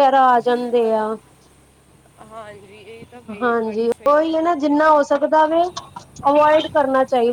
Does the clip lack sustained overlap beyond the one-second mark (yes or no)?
no